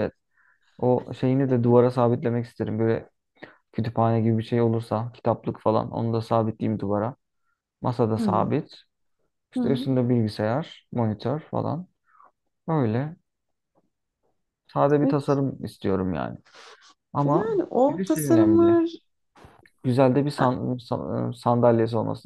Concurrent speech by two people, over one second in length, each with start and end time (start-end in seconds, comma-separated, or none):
17.2-18.8